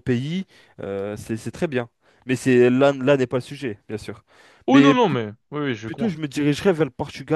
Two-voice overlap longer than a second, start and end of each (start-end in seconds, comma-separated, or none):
none